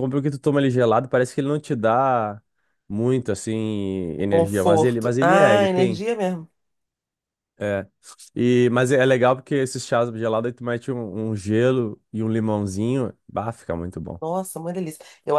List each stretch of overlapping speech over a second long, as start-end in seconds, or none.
4.2-6.0